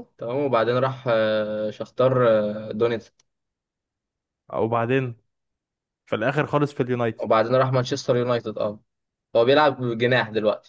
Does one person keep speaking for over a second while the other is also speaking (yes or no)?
no